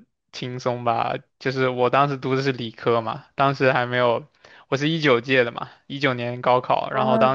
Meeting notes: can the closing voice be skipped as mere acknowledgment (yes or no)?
yes